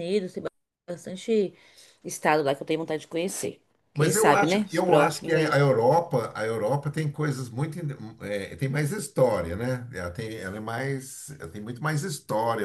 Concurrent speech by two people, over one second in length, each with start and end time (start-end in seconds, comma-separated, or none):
3.9-5.5